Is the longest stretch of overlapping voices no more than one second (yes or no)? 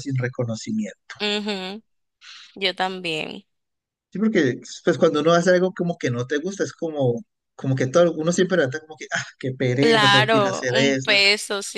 no